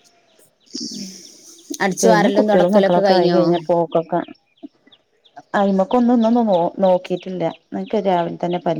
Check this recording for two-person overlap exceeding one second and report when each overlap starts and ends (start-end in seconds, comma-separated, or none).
2.0-3.4